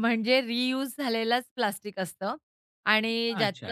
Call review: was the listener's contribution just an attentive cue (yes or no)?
yes